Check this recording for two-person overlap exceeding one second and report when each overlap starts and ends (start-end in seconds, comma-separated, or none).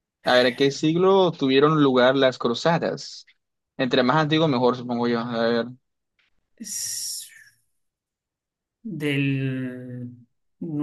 none